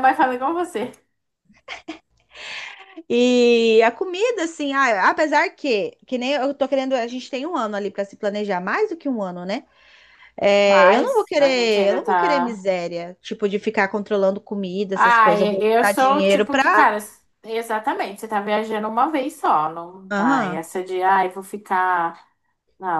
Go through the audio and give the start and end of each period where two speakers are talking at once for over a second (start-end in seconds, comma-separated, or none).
10.7-12.6, 14.9-16.9